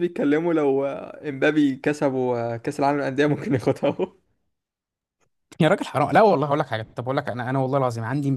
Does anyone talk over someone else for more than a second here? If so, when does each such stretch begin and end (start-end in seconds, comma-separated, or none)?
none